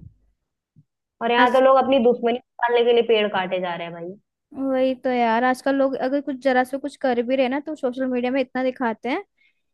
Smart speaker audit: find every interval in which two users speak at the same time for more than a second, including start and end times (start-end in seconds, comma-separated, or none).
none